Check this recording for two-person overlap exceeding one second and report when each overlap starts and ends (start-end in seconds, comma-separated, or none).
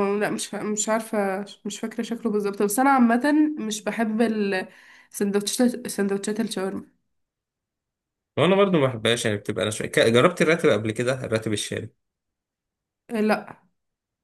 none